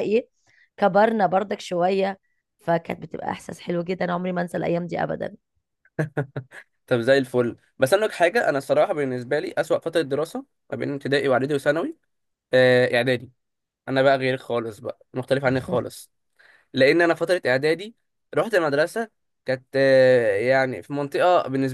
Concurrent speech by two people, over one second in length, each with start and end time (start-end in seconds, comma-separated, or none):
none